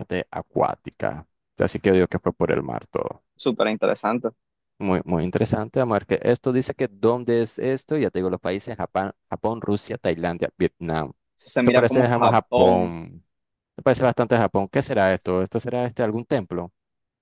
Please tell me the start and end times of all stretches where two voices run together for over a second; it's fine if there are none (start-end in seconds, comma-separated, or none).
11.6-12.9